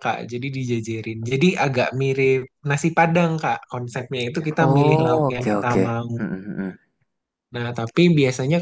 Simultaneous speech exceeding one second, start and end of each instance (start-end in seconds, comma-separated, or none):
4.6-6.2